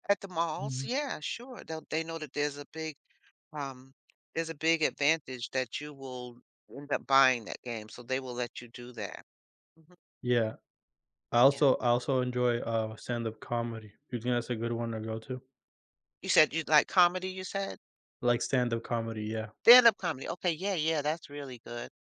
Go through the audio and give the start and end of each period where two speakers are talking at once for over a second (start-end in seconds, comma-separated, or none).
none